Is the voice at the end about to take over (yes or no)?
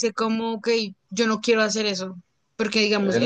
no